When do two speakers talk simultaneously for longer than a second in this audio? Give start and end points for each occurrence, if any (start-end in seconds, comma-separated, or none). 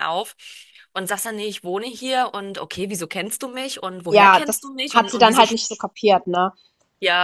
4.1-5.6